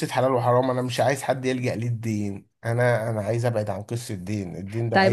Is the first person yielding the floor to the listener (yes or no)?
yes